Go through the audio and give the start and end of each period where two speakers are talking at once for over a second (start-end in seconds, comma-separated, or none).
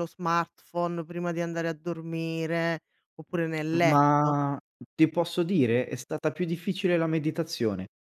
none